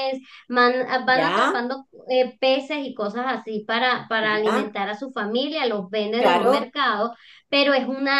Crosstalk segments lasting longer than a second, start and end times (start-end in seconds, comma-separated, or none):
none